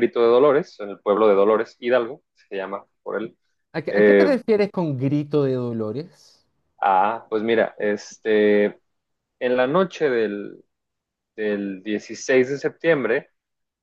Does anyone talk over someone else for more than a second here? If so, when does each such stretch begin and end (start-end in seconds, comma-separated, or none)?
none